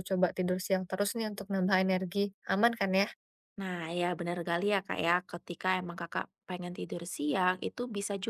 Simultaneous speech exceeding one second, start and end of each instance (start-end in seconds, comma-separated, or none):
none